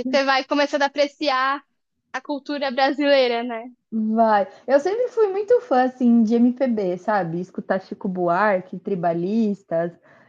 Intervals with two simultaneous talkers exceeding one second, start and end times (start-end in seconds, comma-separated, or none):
none